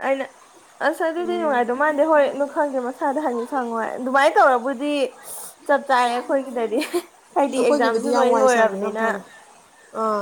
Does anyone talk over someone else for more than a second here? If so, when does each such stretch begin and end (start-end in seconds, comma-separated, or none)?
7.5-9.0